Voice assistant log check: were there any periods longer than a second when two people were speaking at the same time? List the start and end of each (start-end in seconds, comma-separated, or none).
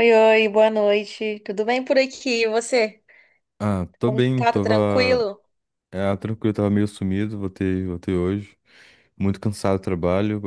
4.0-5.3